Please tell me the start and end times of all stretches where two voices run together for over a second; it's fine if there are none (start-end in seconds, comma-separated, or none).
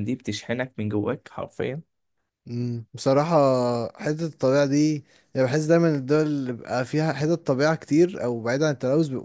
none